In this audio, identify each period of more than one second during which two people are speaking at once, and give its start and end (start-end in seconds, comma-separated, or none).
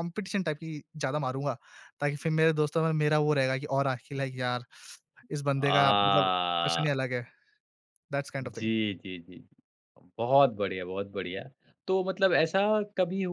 5.5-7.0